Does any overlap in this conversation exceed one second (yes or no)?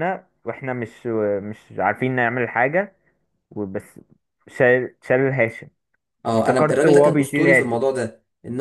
yes